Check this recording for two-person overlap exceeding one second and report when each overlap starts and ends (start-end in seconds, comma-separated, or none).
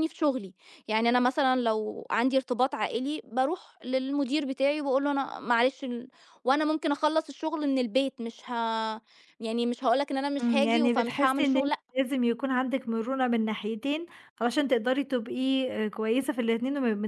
10.4-11.8